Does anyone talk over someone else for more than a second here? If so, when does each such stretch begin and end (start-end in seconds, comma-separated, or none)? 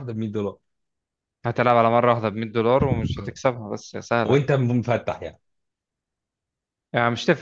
none